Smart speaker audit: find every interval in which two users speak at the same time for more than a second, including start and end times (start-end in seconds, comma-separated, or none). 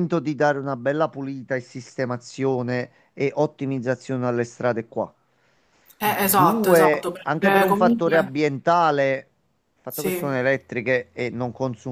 6.0-8.3